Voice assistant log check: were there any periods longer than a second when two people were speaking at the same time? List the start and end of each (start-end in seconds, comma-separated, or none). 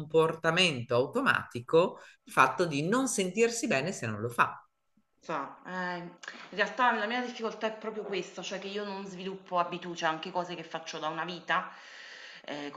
none